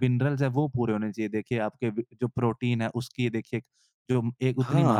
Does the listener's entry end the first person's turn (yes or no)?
yes